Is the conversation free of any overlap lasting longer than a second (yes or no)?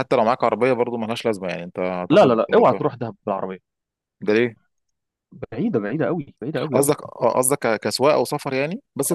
yes